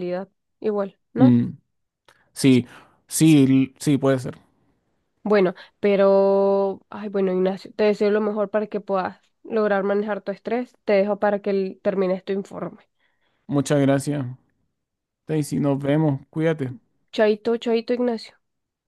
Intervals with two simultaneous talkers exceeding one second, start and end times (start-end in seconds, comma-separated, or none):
none